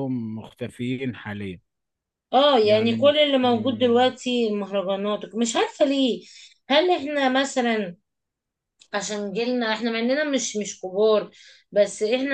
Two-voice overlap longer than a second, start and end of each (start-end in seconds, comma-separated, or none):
2.6-4.1